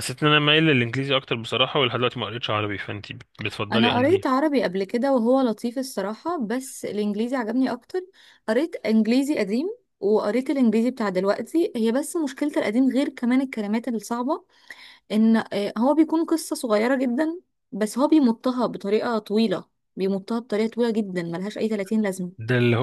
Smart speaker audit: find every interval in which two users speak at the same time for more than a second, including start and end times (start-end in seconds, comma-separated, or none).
none